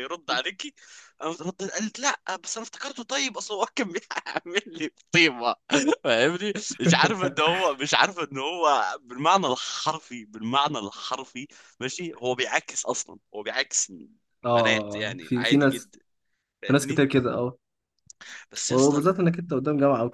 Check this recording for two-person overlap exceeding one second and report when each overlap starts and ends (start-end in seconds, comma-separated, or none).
14.6-15.9